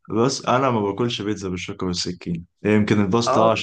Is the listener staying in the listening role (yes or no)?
yes